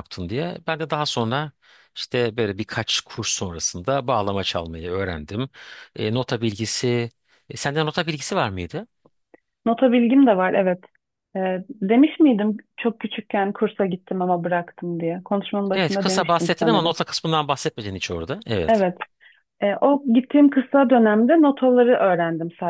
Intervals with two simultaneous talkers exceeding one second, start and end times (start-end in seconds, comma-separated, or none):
15.7-16.9